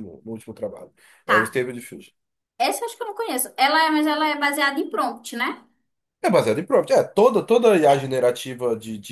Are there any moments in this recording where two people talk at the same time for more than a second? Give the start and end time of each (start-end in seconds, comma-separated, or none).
none